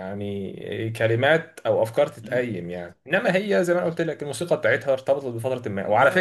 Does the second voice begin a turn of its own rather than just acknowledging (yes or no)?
no